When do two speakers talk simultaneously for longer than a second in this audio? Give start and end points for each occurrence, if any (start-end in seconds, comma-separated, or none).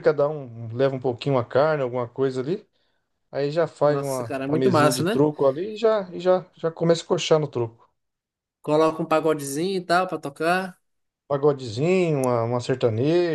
3.8-5.3